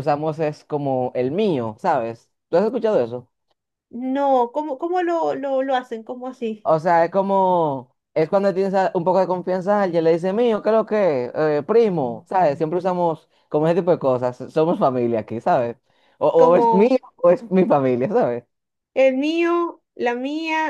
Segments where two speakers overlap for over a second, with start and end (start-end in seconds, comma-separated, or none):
none